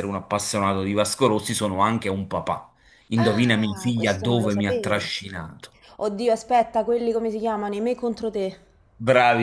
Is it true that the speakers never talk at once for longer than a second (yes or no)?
no